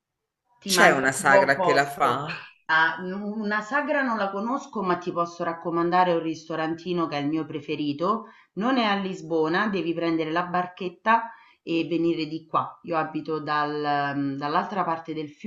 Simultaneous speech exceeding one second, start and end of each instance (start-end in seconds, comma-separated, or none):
0.7-2.3